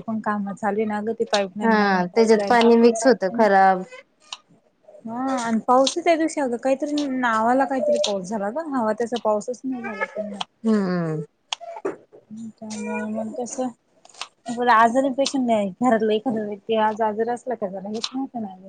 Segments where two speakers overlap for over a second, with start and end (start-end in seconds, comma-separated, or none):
1.6-3.5